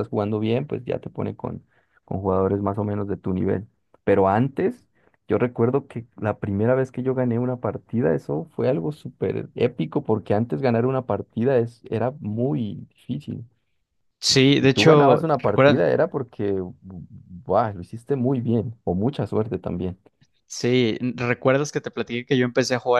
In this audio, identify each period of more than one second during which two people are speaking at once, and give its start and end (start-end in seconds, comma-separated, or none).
14.6-15.9